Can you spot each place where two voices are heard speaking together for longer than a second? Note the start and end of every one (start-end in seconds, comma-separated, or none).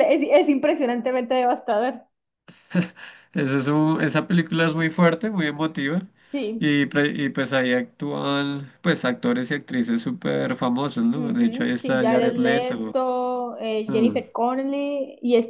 11.1-13.0